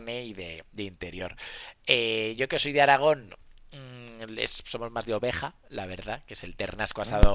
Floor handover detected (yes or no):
no